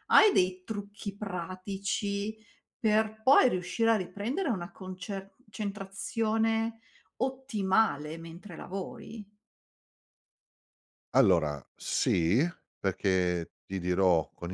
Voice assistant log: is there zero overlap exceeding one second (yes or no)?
yes